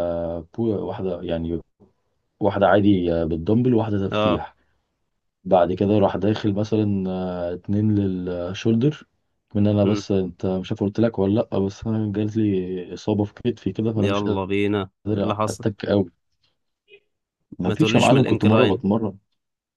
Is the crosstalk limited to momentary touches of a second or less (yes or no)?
no